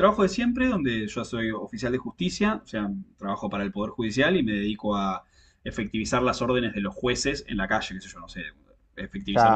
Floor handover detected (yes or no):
no